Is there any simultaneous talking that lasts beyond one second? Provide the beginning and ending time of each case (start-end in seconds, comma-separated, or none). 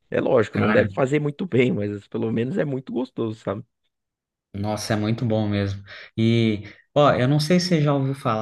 none